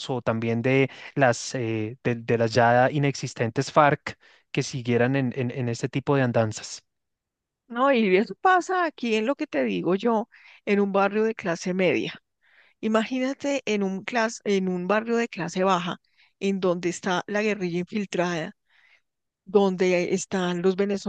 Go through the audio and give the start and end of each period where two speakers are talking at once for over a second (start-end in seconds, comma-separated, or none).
none